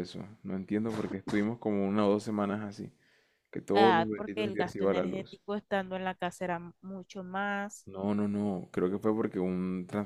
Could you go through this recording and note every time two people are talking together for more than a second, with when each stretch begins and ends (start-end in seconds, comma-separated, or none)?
3.7-5.4